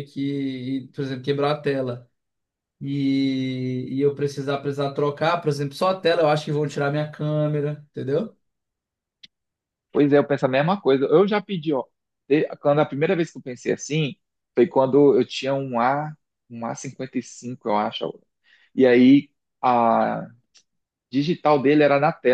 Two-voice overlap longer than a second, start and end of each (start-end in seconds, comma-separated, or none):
none